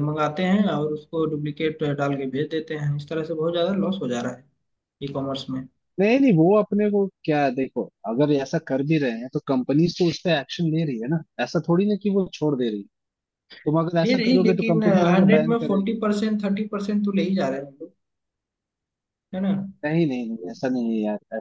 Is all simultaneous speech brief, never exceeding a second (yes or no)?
no